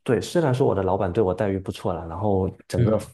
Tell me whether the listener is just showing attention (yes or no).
yes